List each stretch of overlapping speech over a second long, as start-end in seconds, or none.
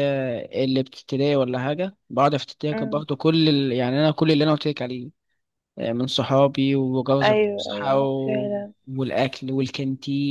7.2-8.5